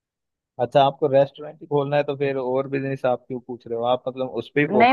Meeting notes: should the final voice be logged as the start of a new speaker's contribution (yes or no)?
yes